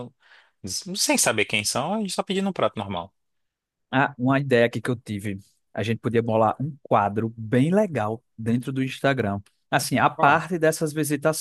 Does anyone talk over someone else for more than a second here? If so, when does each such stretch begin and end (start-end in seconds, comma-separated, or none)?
none